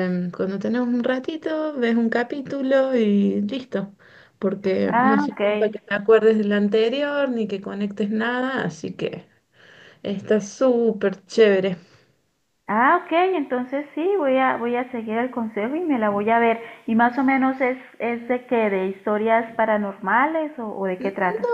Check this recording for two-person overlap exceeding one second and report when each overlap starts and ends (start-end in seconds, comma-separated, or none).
none